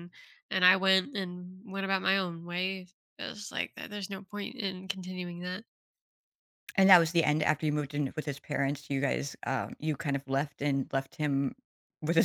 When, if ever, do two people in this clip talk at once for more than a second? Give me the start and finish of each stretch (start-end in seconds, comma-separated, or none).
none